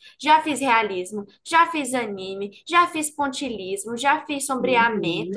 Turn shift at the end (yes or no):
no